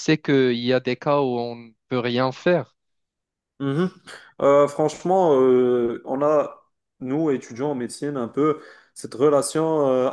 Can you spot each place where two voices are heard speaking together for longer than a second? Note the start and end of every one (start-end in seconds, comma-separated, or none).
none